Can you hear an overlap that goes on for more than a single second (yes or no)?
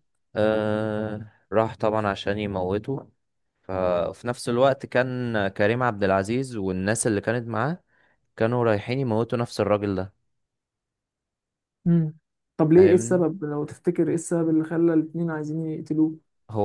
no